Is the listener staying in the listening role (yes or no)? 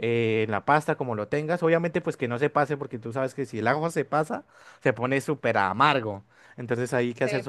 yes